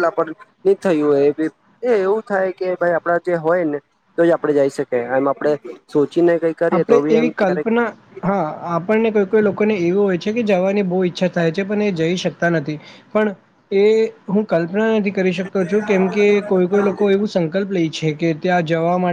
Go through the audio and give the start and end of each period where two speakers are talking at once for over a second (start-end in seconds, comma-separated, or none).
none